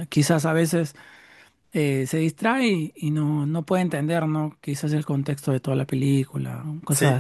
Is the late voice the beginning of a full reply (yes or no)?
yes